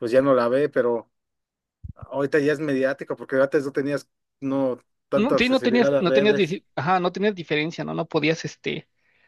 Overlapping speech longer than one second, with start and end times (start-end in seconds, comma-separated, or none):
5.2-6.6